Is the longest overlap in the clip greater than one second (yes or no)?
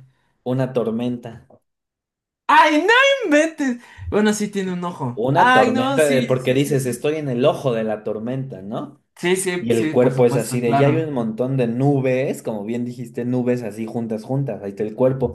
yes